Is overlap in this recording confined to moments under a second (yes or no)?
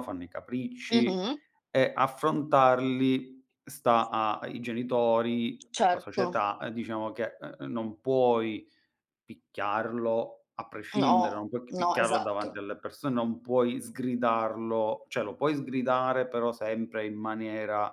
no